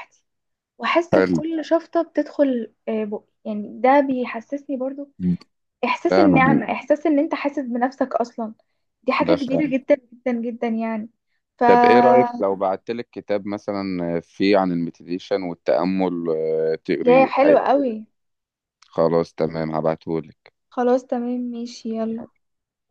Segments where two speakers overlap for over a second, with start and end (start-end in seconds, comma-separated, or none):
none